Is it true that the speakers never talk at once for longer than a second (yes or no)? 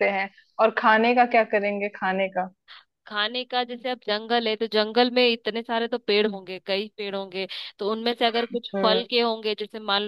yes